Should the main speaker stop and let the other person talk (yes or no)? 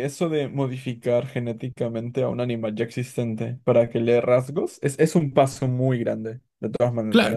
yes